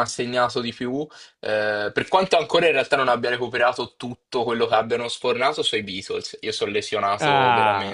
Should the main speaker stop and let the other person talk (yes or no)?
yes